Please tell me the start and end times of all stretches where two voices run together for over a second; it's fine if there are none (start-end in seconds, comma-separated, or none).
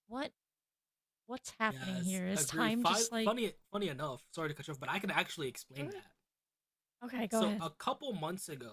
1.7-3.3